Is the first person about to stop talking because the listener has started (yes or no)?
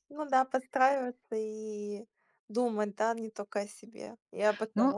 yes